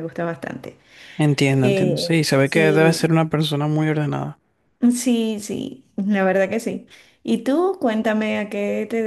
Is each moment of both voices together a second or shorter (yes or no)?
no